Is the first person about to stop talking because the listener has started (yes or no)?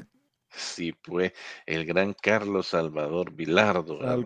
yes